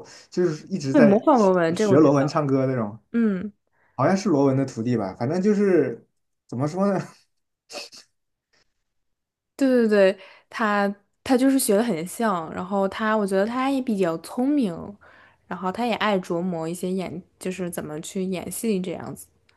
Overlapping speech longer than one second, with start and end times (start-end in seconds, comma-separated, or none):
0.9-2.4